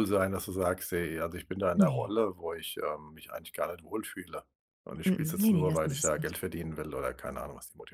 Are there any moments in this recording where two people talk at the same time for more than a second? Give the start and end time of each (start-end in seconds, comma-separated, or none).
5.1-6.3